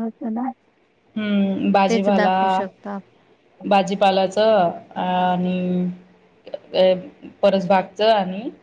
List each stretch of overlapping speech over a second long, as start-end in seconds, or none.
none